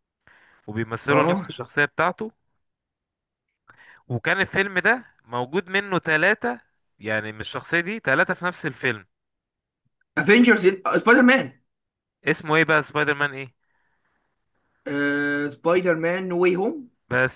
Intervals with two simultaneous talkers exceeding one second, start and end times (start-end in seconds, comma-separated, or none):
none